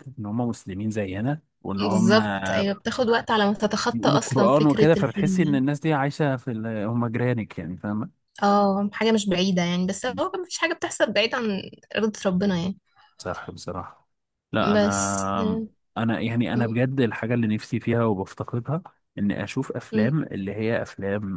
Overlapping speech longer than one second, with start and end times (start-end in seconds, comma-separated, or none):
3.9-5.6